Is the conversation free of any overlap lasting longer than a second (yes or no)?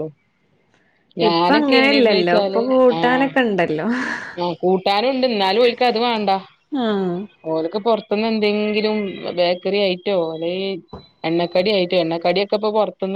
yes